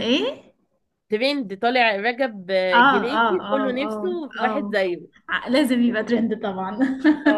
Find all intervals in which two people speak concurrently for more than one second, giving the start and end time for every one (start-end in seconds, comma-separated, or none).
2.7-4.8